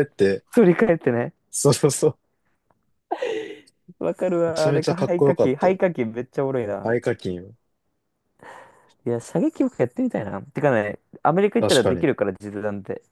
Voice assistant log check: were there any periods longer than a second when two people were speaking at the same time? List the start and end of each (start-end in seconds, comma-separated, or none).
4.5-5.7